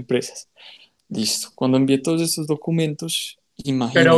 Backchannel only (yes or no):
no